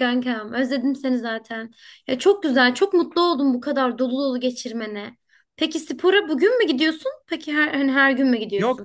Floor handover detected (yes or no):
yes